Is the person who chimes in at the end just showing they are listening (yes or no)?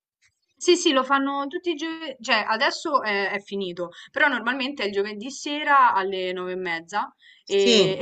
yes